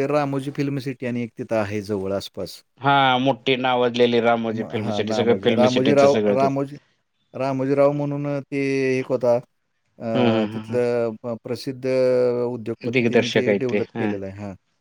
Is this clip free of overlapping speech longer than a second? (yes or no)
no